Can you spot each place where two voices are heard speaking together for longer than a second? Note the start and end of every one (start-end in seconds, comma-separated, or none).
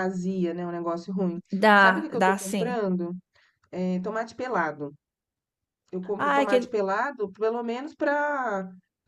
1.5-2.8